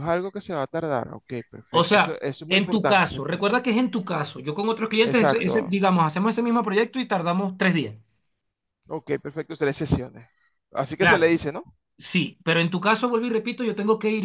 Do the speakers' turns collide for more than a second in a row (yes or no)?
yes